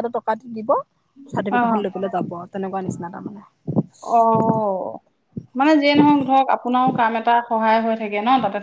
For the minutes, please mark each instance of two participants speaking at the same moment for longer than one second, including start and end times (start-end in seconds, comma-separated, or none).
none